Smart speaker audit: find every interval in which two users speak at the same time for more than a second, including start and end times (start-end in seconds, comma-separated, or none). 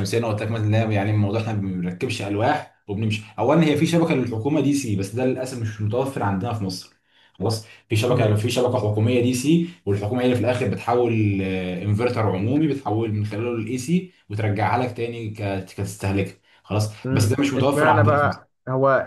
17.0-18.4